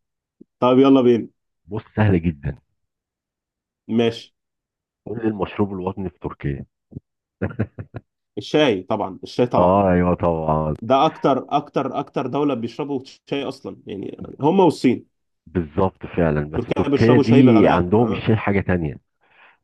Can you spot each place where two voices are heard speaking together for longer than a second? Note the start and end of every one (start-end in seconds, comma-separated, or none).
16.5-18.3